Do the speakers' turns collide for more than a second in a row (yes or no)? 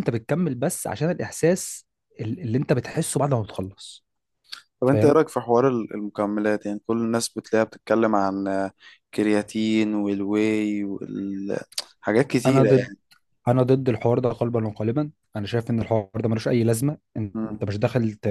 no